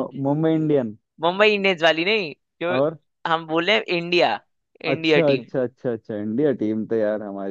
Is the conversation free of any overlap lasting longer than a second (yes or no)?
yes